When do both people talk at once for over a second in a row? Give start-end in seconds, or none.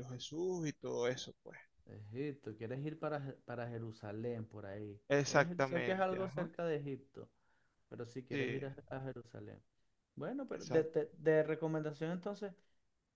5.1-6.5